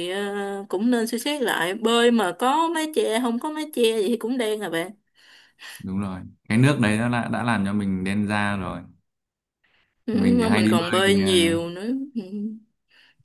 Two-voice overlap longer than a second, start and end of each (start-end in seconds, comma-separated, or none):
10.1-11.6